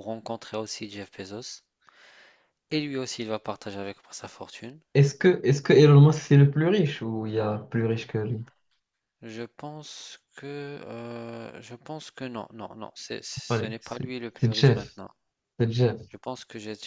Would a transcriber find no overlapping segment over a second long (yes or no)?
no